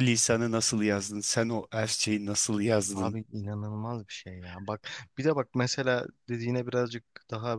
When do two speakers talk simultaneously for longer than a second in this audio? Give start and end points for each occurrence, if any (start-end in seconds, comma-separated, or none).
none